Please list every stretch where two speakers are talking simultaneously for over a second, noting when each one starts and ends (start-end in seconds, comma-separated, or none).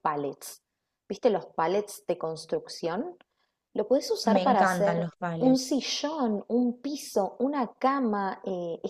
4.2-5.8